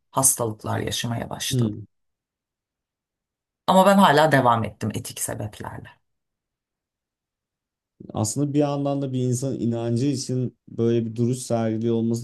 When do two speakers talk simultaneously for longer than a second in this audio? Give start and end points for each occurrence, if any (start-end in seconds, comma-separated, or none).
none